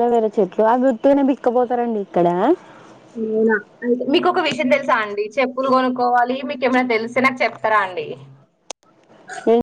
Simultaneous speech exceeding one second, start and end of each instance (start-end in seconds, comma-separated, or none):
none